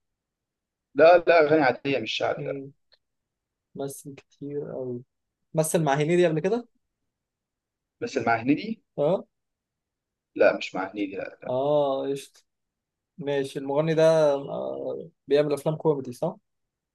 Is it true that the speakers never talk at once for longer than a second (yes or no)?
yes